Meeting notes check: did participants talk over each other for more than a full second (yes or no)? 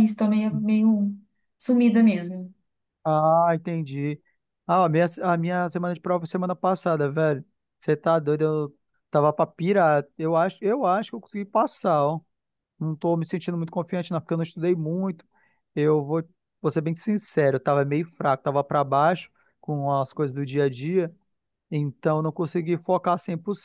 no